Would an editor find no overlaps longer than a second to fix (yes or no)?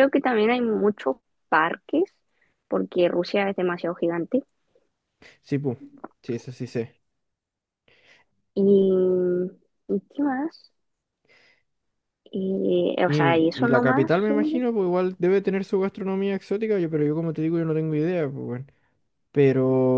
no